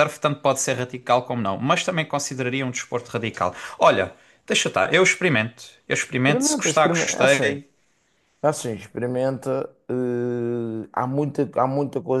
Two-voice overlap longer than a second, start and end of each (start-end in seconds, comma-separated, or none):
6.1-7.6